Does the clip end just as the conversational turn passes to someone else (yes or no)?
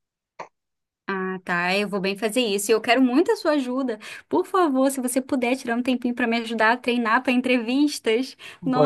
yes